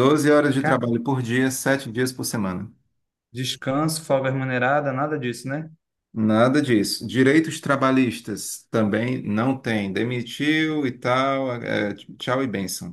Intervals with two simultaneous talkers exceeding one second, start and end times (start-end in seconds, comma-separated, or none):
none